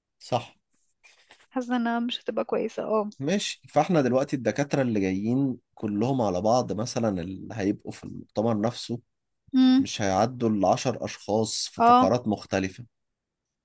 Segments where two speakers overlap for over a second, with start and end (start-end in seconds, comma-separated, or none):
none